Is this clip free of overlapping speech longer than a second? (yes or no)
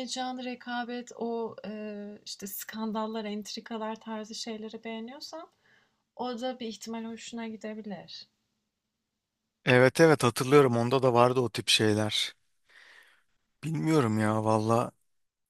yes